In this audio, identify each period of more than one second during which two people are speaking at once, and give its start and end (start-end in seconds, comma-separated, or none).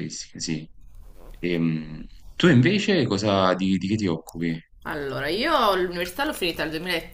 none